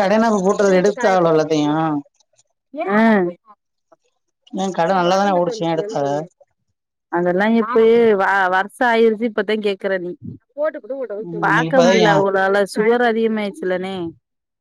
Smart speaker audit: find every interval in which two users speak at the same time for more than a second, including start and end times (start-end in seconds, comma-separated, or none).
0.5-1.7